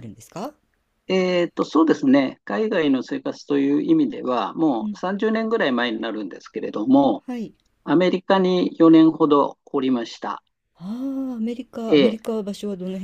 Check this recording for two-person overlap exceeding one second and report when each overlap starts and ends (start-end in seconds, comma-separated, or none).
none